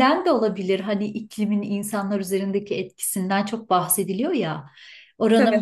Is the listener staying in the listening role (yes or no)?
yes